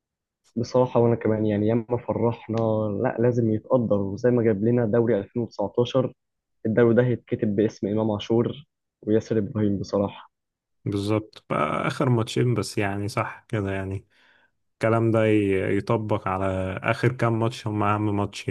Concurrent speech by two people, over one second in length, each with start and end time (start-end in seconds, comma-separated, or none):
none